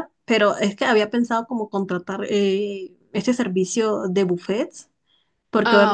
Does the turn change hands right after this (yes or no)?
no